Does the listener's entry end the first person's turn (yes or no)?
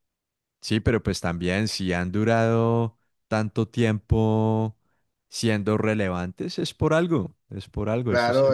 yes